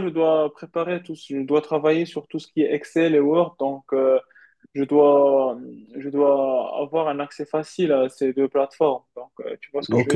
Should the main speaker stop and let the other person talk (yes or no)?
yes